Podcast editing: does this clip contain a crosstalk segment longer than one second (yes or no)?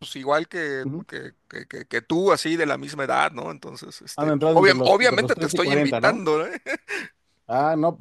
yes